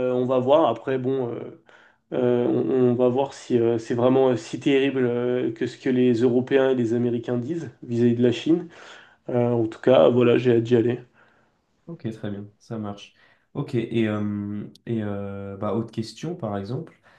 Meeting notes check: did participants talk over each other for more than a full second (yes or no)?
no